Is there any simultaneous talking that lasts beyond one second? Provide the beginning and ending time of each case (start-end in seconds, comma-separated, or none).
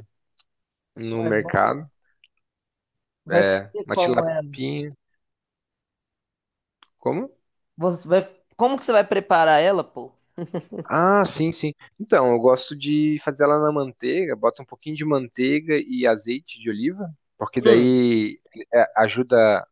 3.3-4.5